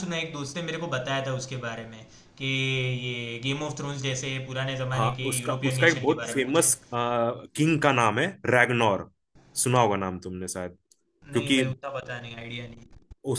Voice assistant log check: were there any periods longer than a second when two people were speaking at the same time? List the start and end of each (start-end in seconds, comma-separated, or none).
4.9-6.7